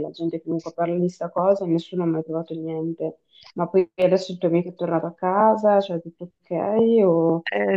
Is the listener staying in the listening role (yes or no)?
no